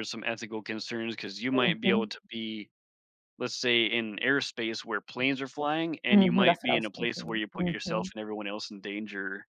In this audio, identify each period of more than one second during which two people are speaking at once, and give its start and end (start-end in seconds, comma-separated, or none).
6.1-8.1